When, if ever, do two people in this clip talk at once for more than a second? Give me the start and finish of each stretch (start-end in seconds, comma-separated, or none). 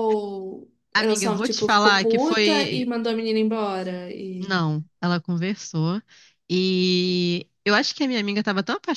0.9-2.9